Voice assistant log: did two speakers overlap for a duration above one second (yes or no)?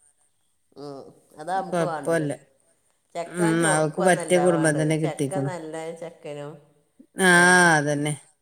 yes